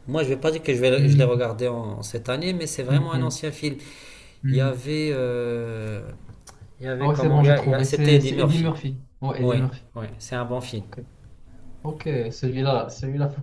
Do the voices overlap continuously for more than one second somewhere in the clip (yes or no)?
yes